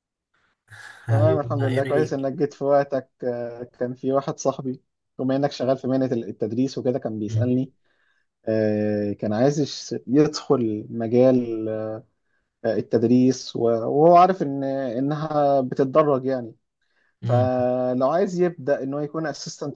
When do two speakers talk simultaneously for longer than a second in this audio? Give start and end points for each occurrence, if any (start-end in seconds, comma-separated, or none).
1.1-2.3